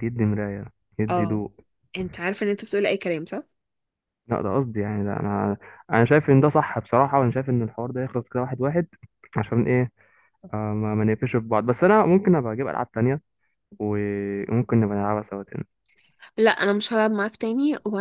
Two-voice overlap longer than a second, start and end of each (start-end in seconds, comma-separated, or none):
none